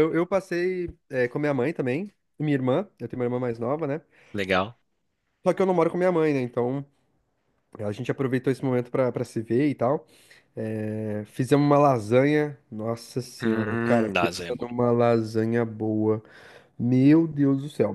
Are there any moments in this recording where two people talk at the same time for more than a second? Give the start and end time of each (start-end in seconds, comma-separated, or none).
13.4-14.7